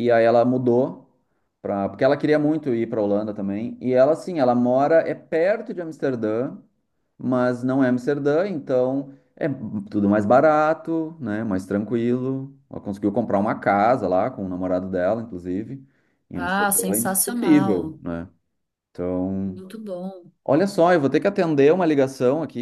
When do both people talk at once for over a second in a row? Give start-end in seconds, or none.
16.4-18.0